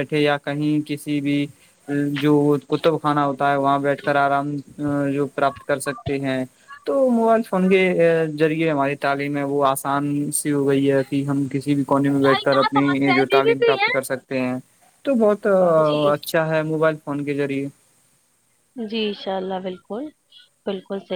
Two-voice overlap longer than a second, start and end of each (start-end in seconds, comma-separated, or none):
12.2-14.0